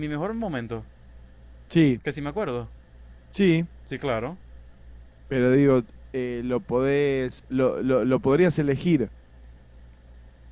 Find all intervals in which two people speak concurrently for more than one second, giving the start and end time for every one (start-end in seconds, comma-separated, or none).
none